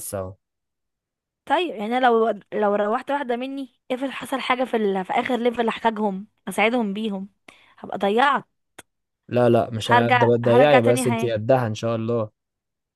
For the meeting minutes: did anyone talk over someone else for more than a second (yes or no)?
yes